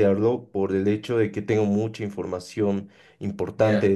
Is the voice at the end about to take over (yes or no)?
no